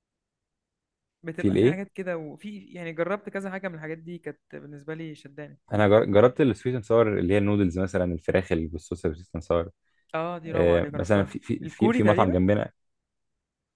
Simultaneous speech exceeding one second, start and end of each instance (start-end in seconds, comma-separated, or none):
10.5-12.4